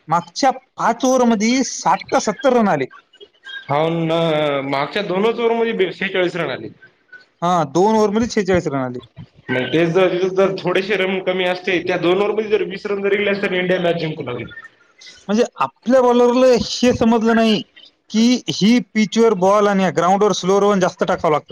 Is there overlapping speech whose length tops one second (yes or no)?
no